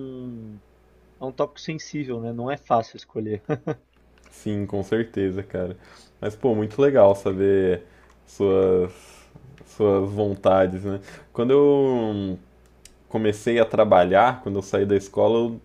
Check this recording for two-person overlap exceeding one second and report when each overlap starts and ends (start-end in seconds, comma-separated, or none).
none